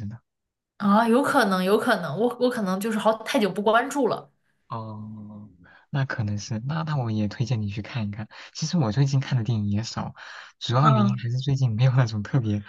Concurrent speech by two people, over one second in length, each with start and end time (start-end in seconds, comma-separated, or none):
none